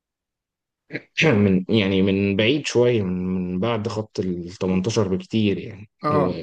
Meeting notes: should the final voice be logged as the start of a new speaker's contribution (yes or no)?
no